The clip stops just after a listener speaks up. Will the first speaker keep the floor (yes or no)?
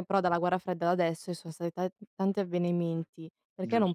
yes